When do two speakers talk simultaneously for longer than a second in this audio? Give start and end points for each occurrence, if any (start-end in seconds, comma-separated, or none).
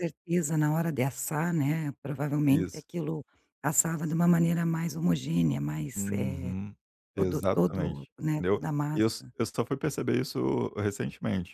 7.2-9.3